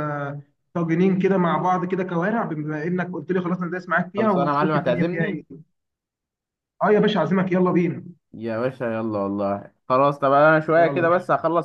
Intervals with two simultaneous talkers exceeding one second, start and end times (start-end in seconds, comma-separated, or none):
4.2-5.4